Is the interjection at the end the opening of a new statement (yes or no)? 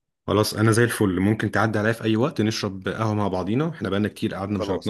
no